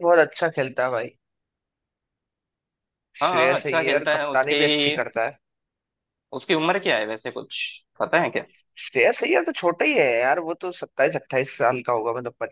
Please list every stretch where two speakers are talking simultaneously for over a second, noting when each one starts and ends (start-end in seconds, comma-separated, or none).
3.2-4.5